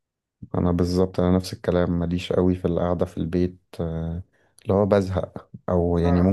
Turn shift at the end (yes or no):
no